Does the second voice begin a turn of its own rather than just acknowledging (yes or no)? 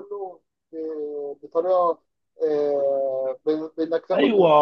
yes